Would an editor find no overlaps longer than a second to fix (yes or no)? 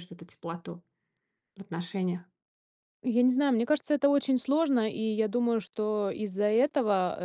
yes